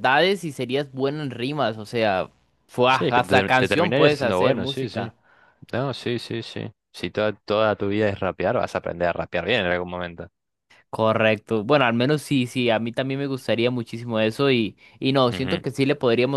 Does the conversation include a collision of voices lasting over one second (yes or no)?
yes